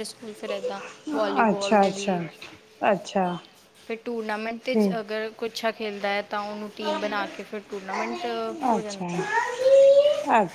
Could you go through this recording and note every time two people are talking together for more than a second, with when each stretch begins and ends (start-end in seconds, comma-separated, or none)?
none